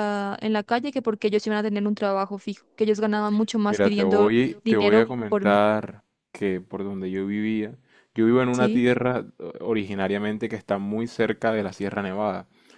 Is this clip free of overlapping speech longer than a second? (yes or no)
no